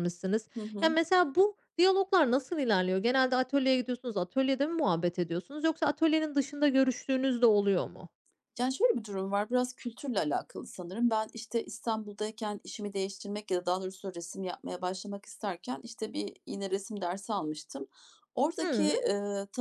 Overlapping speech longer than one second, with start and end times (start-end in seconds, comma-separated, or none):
none